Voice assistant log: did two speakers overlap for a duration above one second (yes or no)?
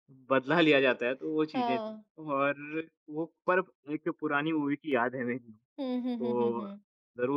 no